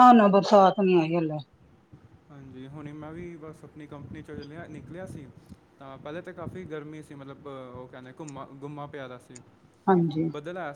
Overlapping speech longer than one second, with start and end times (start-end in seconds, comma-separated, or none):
none